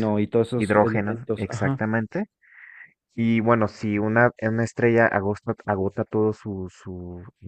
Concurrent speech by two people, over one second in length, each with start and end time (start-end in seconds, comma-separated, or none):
0.6-1.8